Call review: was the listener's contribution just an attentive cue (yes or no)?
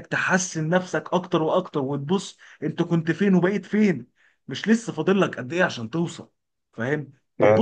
yes